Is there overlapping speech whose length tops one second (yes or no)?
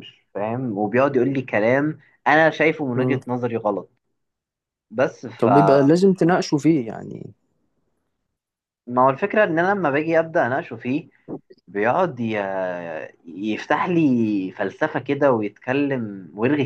no